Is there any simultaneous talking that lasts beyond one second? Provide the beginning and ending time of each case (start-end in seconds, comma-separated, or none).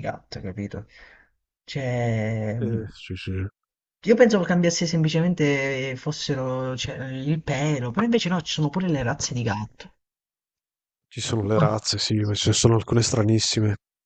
none